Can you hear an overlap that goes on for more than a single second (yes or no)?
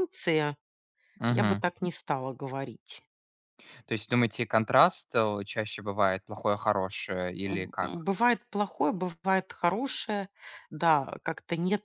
no